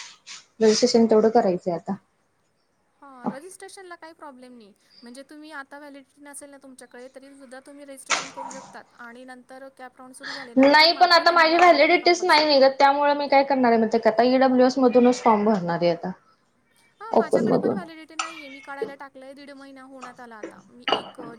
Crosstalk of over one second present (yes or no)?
yes